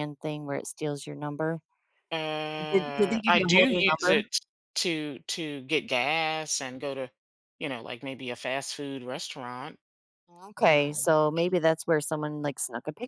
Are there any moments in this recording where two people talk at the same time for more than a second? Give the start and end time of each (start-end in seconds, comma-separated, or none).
2.7-4.2